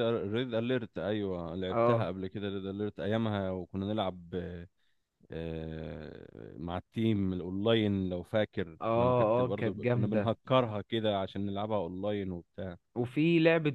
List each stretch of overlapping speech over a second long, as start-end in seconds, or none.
8.8-10.3